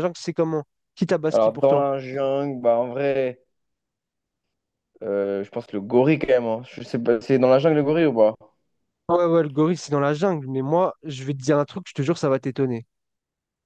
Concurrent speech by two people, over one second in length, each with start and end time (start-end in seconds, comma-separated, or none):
none